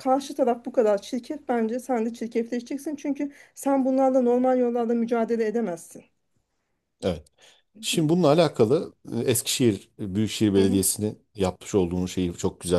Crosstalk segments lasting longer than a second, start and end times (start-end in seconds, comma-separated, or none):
none